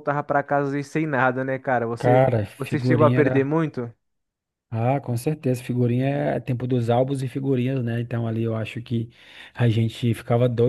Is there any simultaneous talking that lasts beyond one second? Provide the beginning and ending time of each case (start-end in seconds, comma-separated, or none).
2.0-3.5